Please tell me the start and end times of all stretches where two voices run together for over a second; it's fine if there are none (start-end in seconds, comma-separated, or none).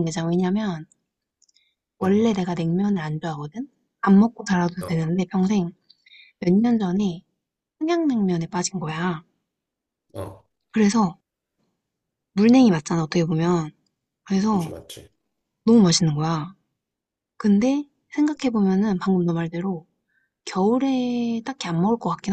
none